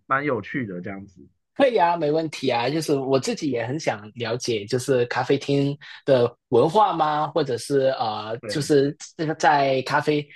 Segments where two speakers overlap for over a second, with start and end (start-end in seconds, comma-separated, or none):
none